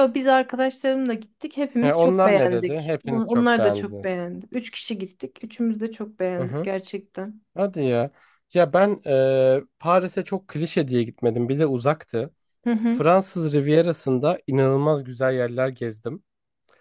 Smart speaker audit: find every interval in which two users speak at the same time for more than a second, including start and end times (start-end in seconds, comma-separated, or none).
1.8-4.2